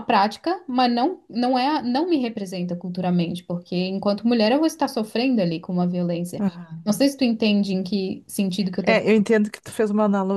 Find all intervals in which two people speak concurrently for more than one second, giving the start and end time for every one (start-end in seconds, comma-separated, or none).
none